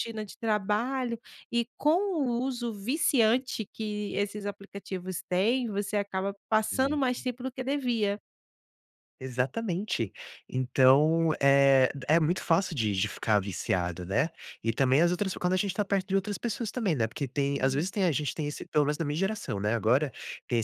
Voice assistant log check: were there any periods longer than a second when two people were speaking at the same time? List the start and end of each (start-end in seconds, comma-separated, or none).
none